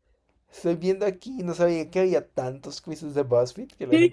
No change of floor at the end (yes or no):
no